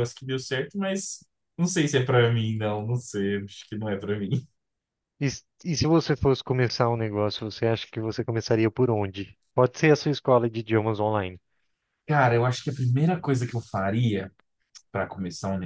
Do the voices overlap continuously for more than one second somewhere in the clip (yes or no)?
no